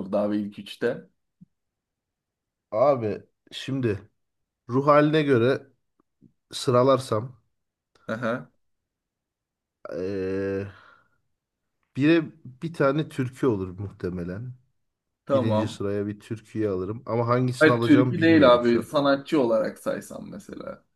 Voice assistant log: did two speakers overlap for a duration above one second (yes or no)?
yes